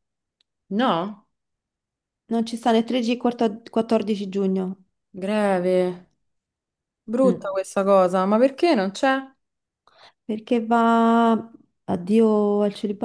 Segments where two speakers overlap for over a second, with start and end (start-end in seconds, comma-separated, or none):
none